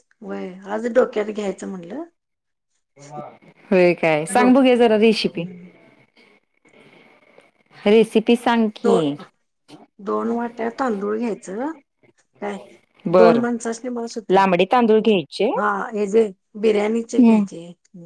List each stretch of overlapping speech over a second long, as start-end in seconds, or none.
none